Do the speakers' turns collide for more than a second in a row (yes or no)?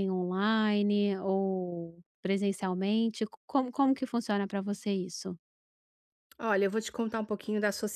no